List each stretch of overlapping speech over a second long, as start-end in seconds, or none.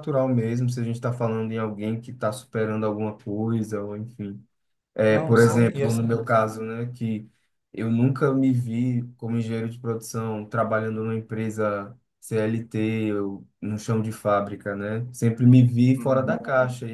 5.1-6.3